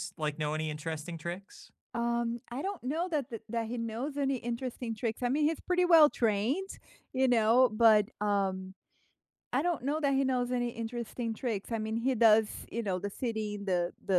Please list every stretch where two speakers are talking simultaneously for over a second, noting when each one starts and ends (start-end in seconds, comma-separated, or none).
none